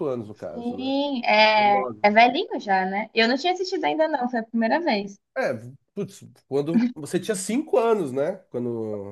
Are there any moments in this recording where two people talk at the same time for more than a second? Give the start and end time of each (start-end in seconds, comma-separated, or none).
none